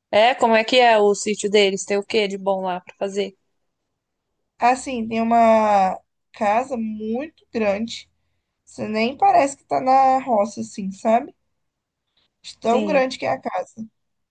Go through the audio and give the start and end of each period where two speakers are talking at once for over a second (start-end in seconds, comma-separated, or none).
none